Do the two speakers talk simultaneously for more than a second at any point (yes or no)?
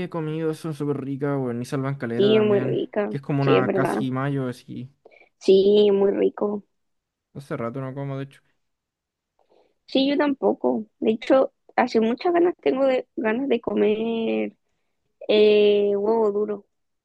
yes